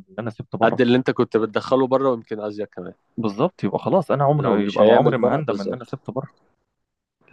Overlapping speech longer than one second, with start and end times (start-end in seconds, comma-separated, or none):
4.4-6.0